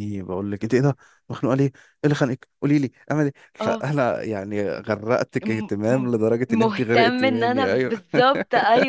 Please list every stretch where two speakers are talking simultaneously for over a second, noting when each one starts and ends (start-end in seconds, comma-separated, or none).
5.4-7.9